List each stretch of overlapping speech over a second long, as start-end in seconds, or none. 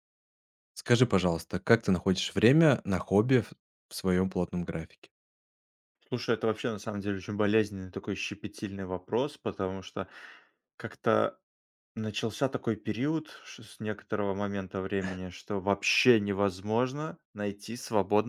none